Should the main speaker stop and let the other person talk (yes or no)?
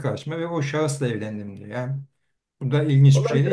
yes